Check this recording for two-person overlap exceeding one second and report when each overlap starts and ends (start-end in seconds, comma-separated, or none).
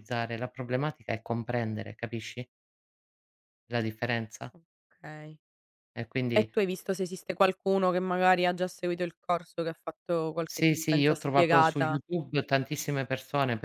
10.5-12.0